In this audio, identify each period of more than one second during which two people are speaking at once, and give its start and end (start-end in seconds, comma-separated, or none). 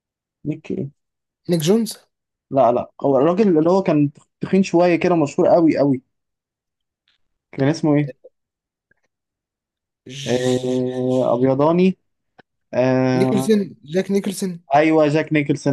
10.3-11.5